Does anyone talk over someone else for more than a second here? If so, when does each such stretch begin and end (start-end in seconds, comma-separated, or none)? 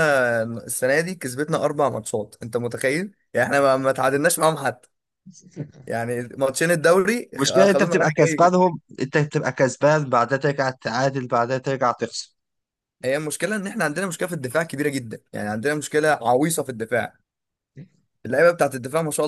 7.3-8.5